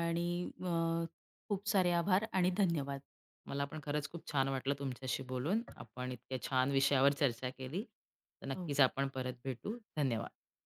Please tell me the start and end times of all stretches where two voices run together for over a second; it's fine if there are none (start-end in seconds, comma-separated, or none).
none